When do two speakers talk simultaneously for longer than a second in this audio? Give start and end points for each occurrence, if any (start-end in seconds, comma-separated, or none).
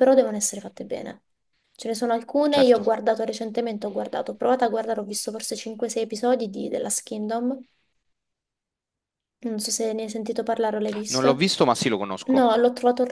none